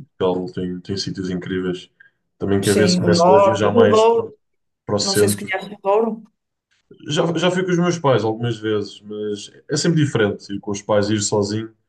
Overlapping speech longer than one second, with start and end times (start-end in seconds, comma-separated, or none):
2.6-4.3